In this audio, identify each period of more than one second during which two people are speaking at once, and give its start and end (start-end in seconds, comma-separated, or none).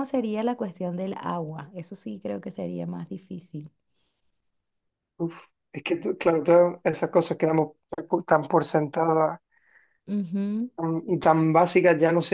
none